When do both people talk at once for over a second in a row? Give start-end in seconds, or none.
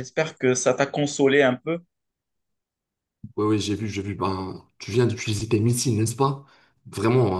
none